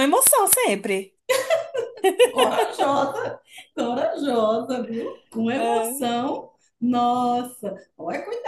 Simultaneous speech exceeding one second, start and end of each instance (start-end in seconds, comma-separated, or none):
none